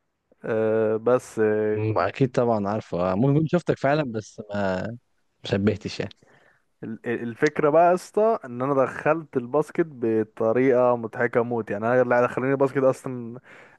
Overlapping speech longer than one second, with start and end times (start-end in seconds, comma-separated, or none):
none